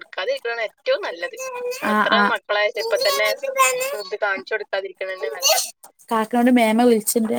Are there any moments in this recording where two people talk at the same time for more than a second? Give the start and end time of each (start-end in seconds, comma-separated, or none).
none